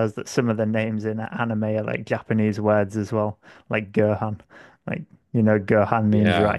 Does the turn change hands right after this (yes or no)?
yes